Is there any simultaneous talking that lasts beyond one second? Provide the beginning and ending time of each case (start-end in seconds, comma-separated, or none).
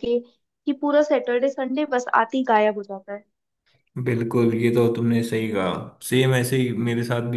none